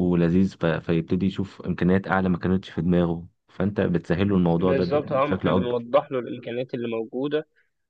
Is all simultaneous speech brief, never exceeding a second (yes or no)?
no